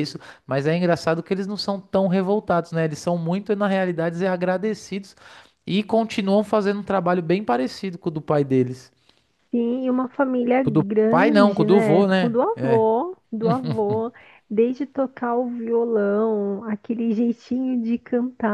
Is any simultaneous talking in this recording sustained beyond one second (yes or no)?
yes